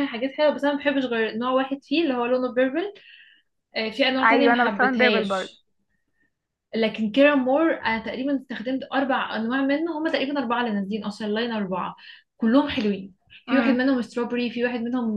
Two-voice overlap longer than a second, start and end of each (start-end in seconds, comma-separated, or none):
4.2-5.6